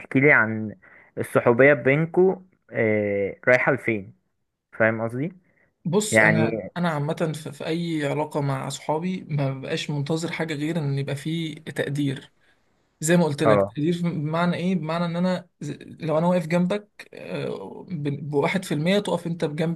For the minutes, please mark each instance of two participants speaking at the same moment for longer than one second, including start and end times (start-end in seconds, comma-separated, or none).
none